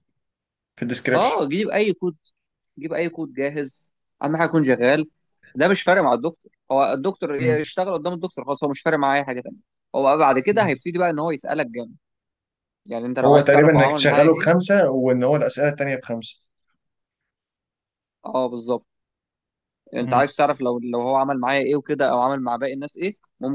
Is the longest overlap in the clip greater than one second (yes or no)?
yes